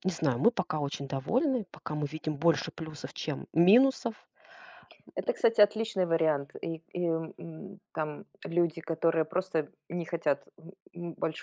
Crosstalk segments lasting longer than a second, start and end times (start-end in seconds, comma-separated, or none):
none